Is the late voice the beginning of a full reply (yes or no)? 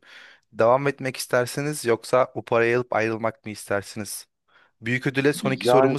no